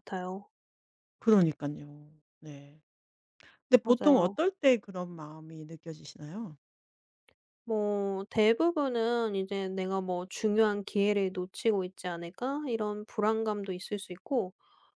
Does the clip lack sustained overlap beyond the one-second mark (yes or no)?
yes